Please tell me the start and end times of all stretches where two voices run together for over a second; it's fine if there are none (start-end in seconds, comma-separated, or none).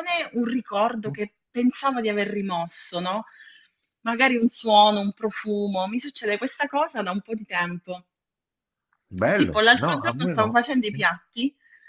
9.3-11.1